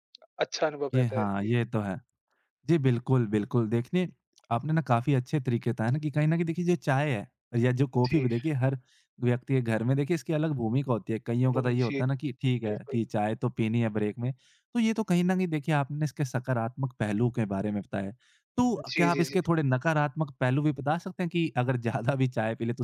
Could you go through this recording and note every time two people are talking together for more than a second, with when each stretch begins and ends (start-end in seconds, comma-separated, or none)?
none